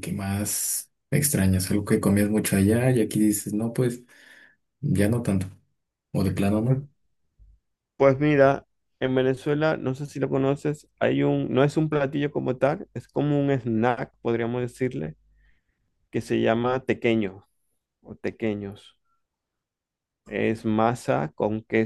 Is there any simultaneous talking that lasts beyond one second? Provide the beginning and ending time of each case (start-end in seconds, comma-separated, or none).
none